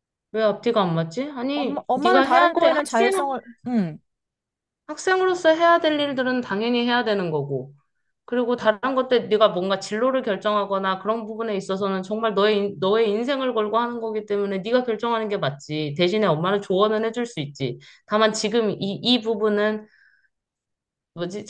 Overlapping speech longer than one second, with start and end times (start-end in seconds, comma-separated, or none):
1.5-3.1